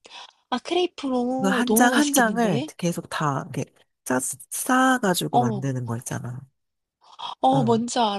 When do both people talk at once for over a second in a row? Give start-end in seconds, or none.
1.4-2.7